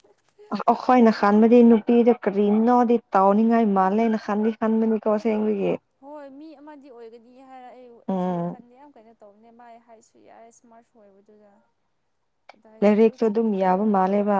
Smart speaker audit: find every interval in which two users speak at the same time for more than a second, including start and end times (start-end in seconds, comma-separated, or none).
none